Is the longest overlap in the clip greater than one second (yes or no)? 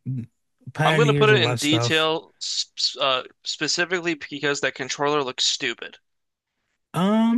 yes